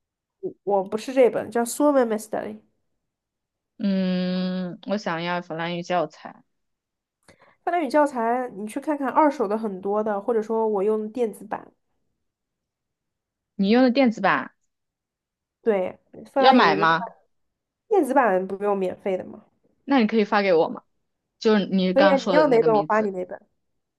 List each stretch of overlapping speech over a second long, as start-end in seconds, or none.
21.9-23.1